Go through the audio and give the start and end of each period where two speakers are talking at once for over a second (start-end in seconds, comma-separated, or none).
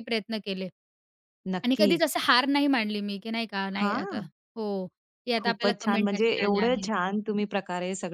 5.4-6.9